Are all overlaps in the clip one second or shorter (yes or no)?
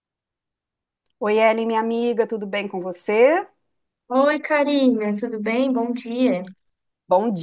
yes